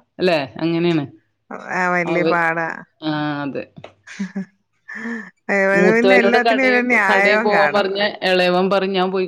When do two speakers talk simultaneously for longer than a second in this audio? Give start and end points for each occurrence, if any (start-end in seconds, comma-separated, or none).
5.8-8.1